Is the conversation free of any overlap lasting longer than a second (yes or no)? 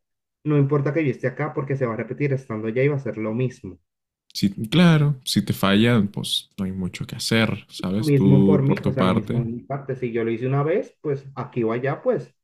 no